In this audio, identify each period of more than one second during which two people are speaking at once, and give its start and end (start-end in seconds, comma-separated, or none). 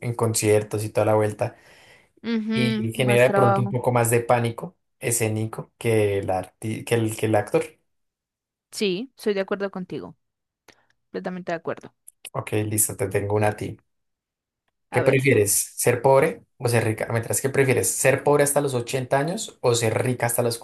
2.5-3.8